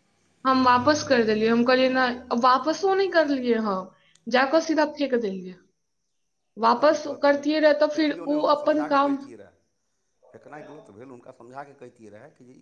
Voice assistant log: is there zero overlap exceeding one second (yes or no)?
no